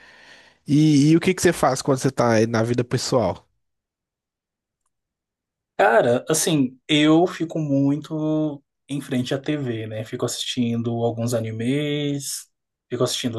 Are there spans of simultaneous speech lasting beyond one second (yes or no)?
no